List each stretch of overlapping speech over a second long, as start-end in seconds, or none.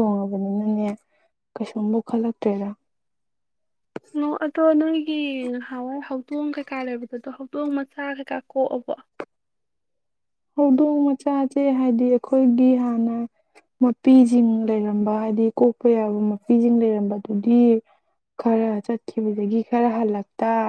none